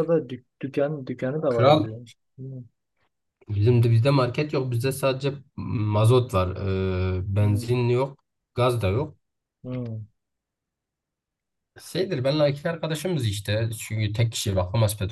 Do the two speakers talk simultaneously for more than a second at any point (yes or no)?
no